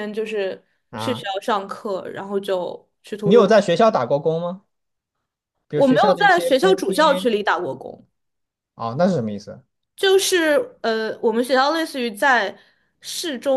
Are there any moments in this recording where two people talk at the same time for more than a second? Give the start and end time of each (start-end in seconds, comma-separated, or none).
5.7-7.3